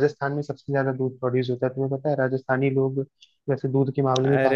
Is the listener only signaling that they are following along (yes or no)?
no